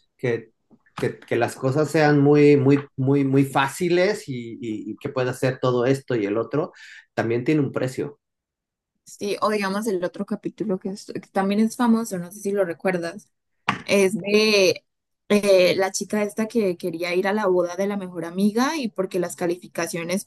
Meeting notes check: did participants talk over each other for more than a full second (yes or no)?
no